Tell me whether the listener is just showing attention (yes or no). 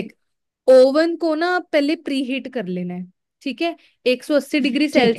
yes